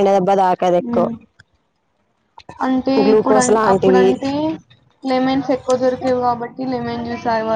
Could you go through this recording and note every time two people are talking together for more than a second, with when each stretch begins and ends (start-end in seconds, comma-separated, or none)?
none